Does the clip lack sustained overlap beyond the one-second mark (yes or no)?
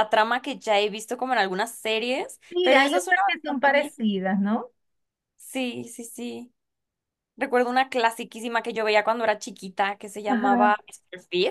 no